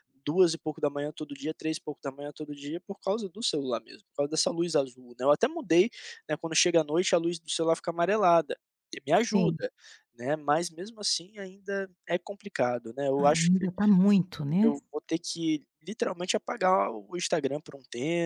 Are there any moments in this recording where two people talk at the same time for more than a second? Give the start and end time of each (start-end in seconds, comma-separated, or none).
none